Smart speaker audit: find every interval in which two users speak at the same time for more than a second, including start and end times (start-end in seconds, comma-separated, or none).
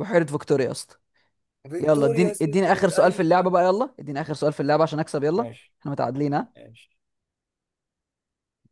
1.8-3.5